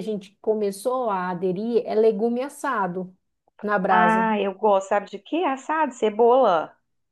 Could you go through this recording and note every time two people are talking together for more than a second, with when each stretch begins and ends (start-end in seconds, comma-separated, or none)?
none